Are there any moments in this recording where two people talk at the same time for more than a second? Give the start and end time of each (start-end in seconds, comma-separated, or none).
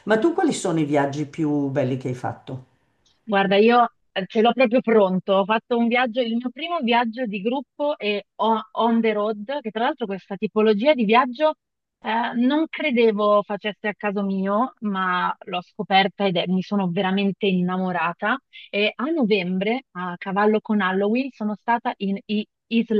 none